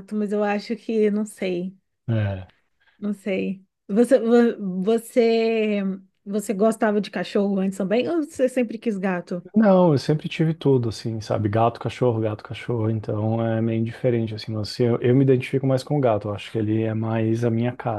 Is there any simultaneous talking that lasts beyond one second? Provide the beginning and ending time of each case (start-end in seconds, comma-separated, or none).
none